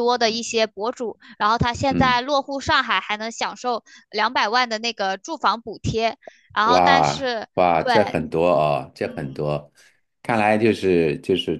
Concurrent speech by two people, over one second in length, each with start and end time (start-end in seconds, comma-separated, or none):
6.6-8.2